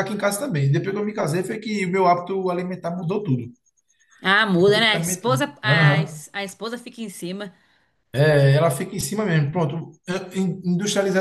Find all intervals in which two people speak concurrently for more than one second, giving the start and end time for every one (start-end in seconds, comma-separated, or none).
4.6-6.2